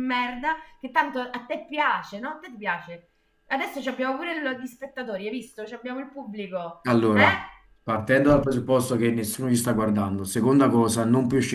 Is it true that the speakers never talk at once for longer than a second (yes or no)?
yes